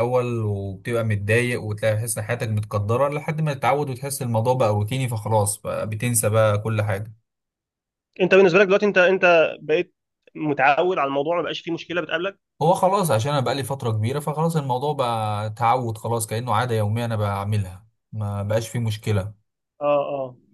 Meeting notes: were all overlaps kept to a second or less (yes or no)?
yes